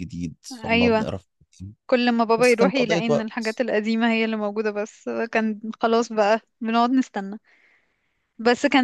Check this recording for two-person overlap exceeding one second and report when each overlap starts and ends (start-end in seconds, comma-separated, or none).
2.4-3.6